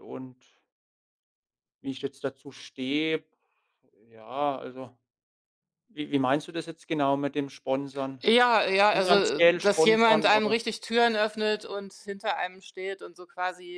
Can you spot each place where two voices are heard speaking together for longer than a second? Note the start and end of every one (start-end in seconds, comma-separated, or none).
8.9-10.6